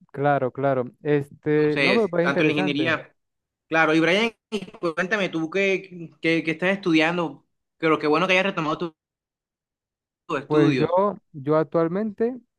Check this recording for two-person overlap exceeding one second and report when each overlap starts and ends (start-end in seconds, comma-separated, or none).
1.5-3.0